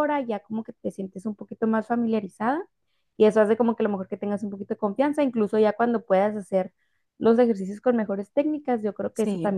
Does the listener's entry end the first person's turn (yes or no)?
no